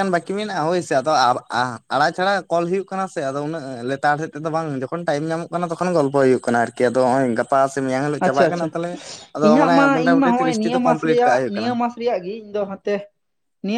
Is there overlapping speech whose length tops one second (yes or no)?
yes